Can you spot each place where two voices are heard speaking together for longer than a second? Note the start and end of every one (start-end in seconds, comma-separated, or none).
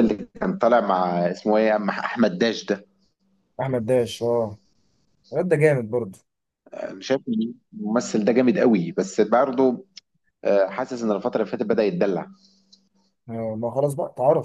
none